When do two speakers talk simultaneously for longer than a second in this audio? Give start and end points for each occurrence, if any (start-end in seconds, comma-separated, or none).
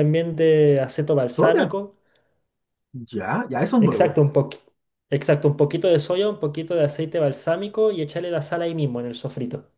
none